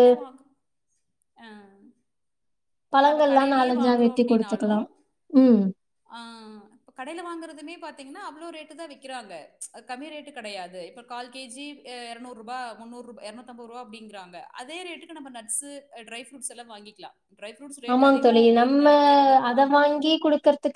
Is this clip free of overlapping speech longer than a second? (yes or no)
no